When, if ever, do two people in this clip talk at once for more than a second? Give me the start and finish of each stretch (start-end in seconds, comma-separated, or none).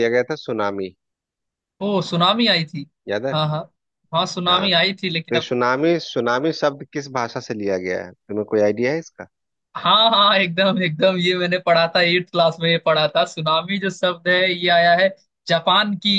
none